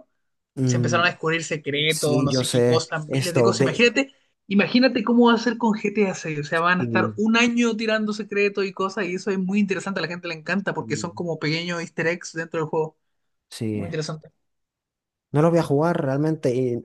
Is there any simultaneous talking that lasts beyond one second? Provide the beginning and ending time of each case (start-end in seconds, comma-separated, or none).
1.9-3.8